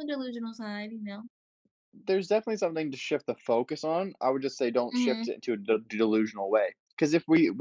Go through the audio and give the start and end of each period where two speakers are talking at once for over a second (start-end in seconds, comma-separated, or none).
none